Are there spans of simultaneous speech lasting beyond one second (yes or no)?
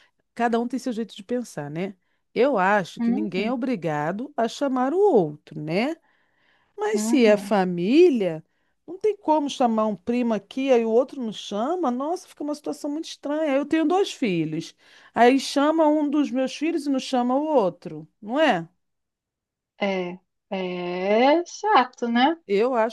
no